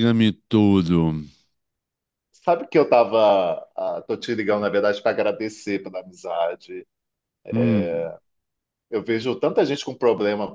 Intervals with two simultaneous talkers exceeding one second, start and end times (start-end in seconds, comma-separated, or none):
none